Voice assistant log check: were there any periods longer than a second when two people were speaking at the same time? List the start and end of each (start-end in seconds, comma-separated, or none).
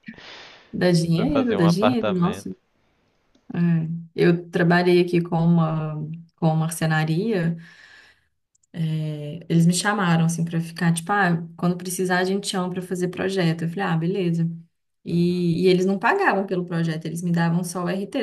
1.1-2.5